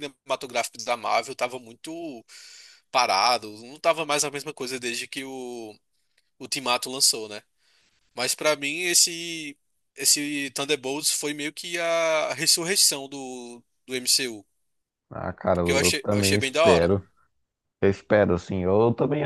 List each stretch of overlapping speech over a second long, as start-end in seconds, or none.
15.5-16.9